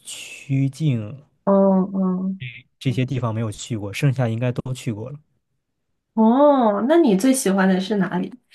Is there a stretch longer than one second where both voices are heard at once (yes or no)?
no